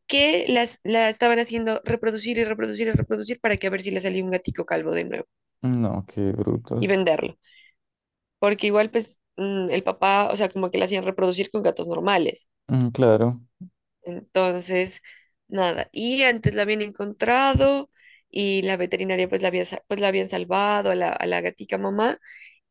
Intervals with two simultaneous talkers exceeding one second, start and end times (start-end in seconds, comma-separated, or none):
none